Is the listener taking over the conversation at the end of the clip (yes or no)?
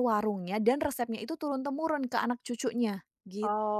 yes